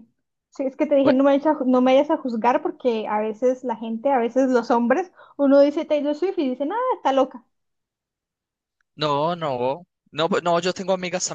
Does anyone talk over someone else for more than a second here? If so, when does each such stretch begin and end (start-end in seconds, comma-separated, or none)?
none